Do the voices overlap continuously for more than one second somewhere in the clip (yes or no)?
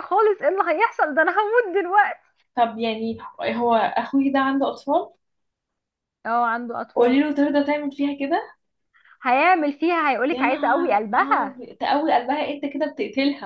yes